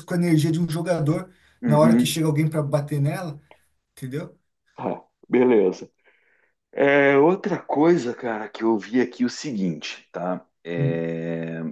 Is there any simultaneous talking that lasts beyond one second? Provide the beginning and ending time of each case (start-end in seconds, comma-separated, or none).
none